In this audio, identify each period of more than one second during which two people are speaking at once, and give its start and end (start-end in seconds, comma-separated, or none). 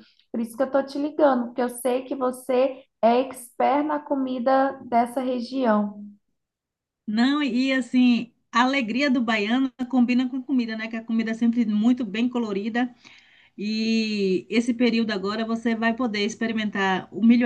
none